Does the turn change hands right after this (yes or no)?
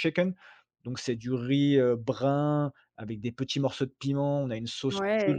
no